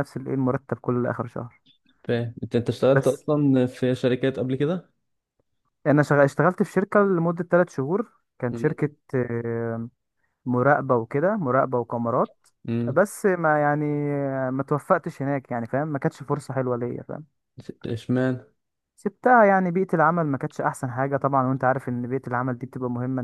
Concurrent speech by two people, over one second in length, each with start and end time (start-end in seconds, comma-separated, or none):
none